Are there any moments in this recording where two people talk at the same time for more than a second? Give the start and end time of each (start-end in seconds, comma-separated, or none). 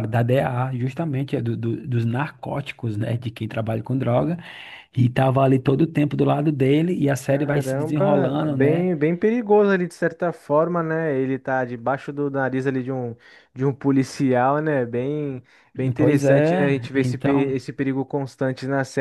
7.3-8.9, 16.0-17.6